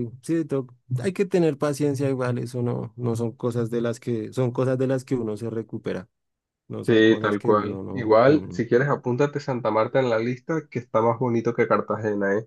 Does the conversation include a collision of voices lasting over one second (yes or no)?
yes